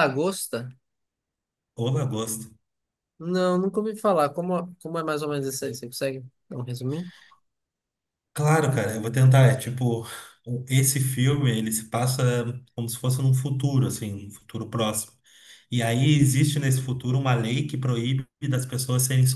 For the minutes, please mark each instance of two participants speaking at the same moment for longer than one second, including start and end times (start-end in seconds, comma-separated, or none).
none